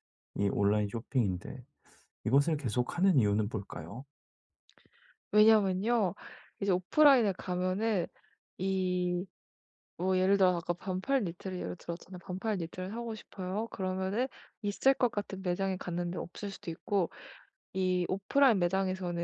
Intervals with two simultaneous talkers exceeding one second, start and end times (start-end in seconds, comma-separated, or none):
none